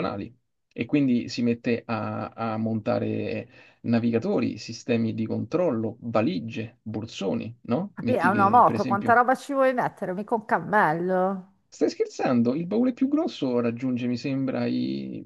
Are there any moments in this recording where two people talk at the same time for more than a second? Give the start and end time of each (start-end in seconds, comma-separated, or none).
7.9-9.2